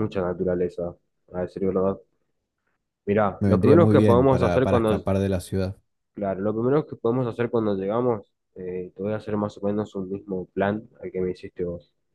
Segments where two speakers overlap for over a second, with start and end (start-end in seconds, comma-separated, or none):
3.4-5.0